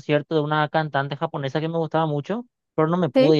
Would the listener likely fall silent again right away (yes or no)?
yes